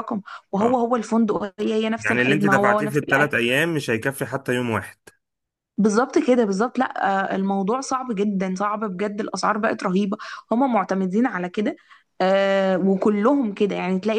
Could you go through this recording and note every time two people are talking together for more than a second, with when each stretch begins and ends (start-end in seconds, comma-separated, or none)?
2.0-3.4